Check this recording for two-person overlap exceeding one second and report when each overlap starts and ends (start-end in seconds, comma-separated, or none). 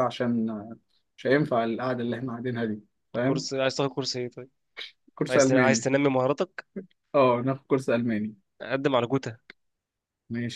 none